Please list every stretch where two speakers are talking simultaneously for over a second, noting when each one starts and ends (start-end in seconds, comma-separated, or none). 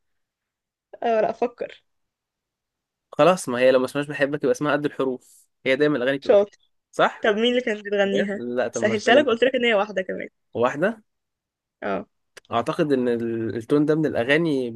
8.0-9.4